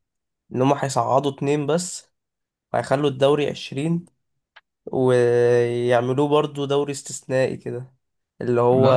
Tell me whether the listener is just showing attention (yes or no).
yes